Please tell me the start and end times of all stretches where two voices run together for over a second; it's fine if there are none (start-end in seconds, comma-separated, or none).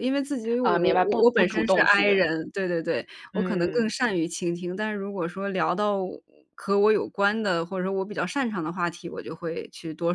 0.6-2.2